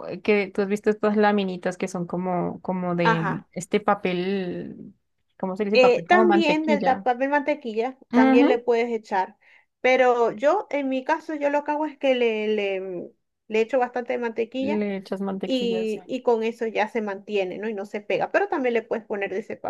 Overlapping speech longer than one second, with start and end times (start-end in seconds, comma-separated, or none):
5.7-7.1